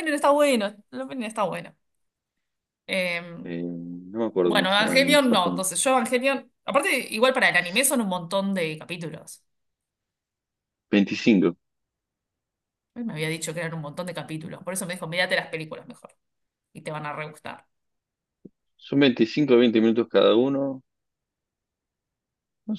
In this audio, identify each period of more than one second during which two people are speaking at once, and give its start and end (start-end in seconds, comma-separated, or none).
4.4-5.6